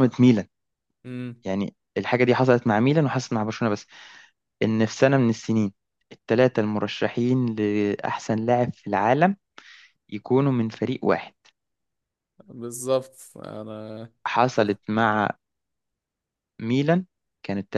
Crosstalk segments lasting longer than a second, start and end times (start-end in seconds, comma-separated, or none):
none